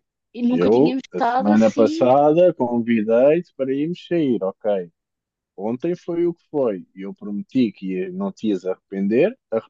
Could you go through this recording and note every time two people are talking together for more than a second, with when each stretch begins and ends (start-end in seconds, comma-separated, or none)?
0.5-2.1